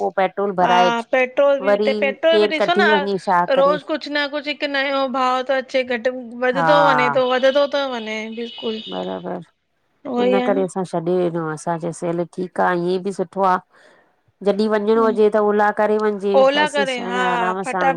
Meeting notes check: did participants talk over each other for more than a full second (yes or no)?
no